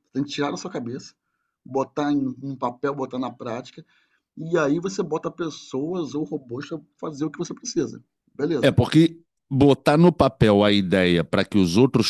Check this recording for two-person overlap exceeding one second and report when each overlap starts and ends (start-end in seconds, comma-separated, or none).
none